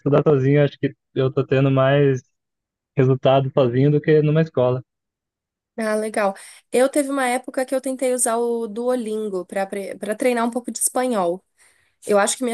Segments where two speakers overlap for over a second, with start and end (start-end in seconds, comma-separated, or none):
none